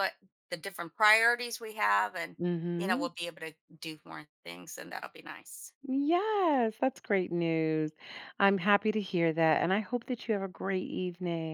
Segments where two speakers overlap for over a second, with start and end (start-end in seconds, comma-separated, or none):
none